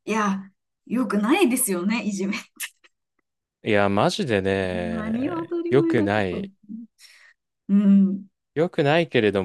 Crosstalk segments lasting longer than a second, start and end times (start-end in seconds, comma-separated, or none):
4.9-6.5